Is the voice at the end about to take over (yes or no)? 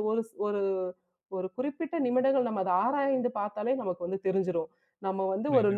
no